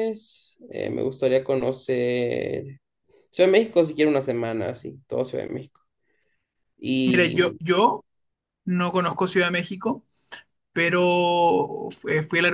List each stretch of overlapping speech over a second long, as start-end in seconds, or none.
none